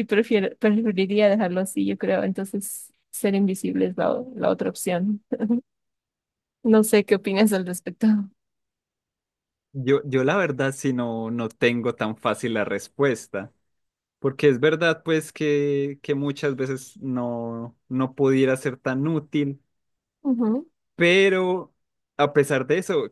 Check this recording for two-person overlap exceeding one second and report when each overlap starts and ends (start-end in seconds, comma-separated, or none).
none